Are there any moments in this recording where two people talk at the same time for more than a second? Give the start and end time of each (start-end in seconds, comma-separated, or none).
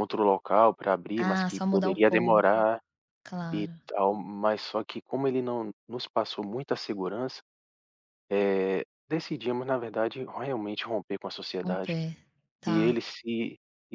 1.1-2.5